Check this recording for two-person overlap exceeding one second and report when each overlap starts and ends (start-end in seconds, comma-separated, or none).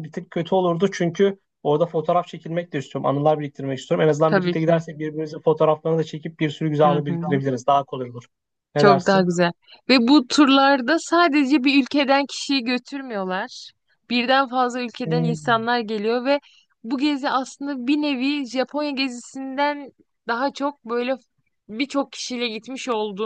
none